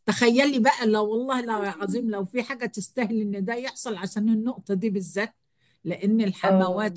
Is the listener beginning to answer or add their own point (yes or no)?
no